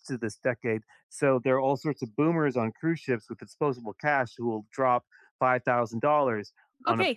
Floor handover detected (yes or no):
yes